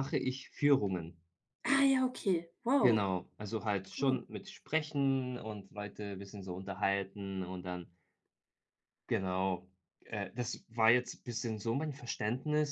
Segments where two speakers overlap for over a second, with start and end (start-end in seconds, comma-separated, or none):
none